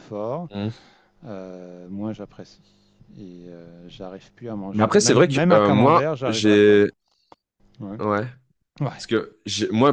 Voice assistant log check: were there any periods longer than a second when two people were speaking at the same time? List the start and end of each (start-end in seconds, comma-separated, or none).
4.7-6.8